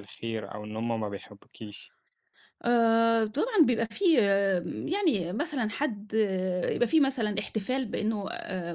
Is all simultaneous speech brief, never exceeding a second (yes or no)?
yes